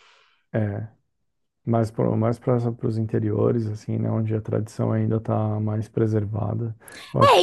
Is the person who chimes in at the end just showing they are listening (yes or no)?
no